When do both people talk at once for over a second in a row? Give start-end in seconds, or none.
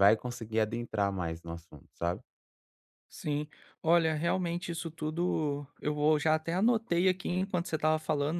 none